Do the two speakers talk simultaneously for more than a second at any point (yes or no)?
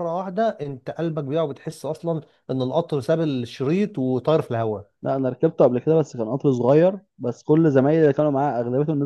no